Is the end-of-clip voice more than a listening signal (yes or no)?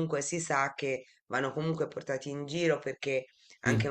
no